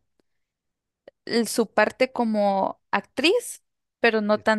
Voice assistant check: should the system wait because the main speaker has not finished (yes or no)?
yes